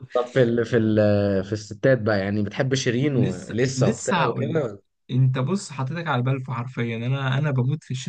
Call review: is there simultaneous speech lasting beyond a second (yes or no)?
yes